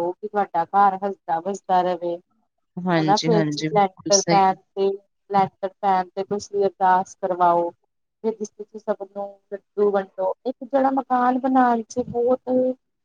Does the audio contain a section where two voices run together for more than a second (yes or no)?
yes